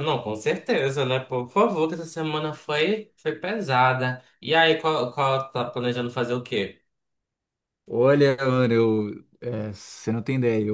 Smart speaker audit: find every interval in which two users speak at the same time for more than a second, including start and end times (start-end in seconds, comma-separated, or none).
none